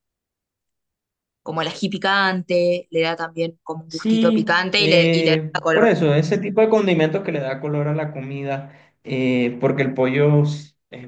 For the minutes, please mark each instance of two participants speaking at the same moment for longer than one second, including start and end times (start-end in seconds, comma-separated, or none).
3.9-5.9